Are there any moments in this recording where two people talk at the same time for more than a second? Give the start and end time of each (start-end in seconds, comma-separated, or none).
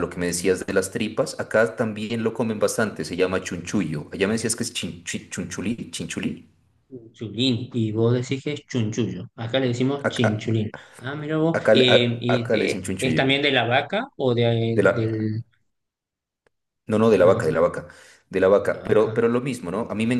11.5-13.2